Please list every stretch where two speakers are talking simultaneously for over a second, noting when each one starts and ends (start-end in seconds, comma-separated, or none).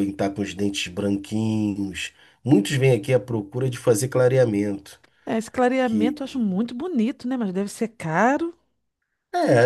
none